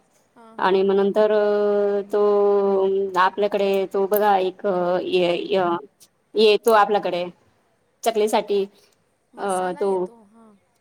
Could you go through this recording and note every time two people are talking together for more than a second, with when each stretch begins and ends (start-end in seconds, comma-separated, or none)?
none